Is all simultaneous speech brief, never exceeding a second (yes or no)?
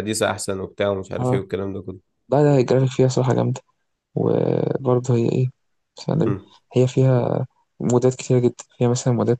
yes